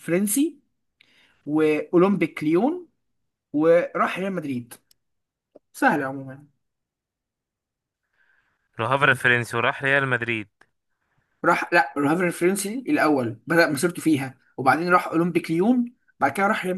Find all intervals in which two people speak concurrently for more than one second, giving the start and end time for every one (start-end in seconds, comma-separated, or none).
none